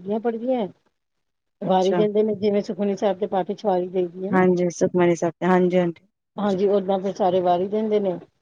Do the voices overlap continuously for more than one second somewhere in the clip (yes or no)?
no